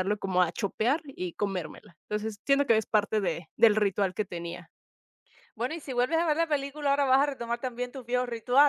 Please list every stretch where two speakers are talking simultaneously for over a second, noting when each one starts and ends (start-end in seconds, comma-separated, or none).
none